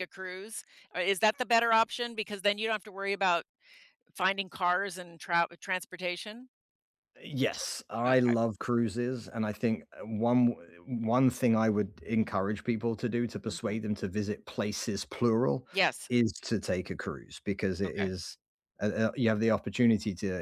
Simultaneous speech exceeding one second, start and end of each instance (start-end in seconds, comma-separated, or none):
none